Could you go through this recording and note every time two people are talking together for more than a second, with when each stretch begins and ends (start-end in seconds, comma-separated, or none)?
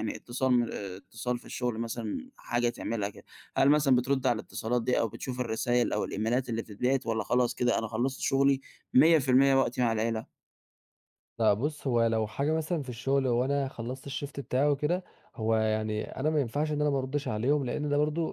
none